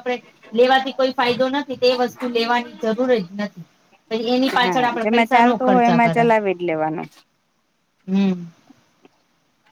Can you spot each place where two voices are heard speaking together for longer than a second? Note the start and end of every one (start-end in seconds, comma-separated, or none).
4.6-6.2